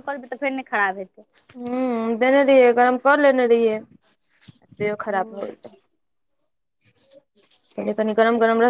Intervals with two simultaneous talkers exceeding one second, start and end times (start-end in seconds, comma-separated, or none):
none